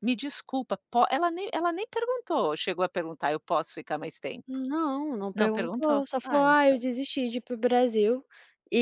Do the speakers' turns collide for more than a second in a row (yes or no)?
yes